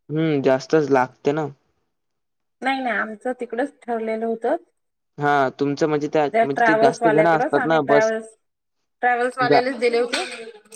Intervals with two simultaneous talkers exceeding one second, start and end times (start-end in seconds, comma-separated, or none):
6.3-8.1